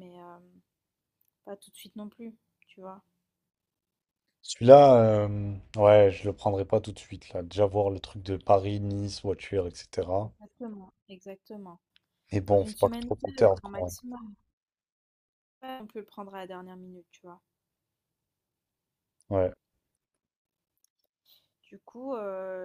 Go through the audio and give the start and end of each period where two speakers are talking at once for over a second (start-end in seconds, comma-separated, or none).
12.5-13.9